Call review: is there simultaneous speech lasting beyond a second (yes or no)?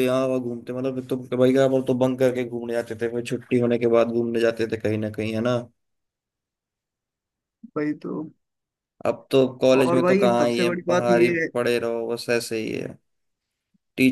yes